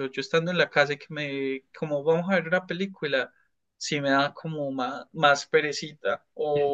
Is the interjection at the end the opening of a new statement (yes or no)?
no